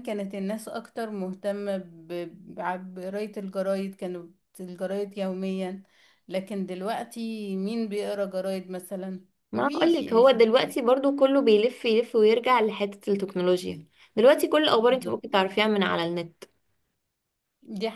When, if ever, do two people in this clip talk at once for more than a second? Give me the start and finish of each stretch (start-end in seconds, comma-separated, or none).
9.5-10.8